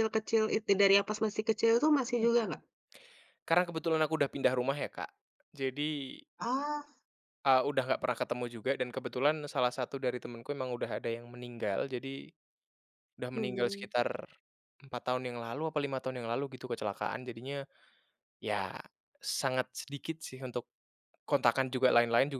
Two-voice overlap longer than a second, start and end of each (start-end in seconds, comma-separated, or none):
none